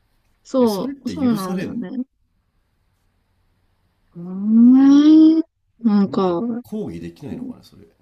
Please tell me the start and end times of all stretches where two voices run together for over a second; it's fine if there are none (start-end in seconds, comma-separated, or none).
0.6-1.9